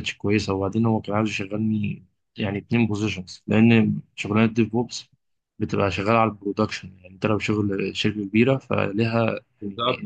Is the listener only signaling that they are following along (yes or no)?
no